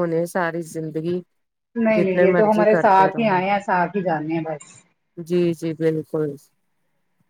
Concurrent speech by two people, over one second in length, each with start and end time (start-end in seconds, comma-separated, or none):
1.9-3.4